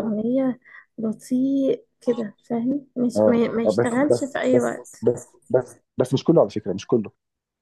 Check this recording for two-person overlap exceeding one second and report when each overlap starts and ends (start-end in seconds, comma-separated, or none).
3.2-5.0